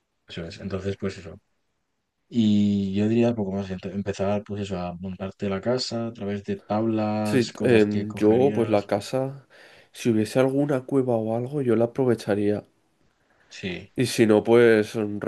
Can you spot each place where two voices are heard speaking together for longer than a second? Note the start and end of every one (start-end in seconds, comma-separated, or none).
7.2-8.9